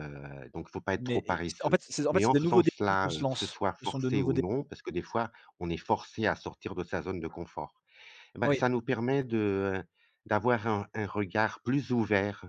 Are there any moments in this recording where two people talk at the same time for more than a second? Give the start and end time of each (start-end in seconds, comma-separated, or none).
1.0-4.4